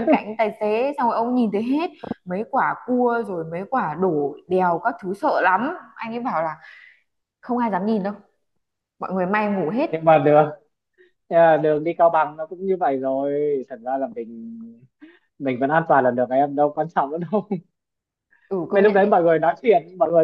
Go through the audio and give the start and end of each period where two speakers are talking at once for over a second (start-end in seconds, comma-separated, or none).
none